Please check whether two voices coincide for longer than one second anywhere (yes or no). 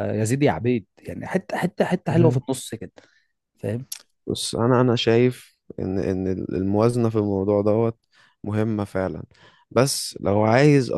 no